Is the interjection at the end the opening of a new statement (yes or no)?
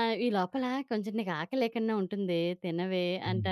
yes